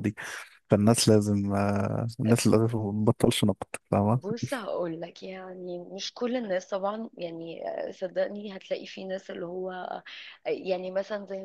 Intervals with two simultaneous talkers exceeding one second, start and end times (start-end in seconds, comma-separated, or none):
none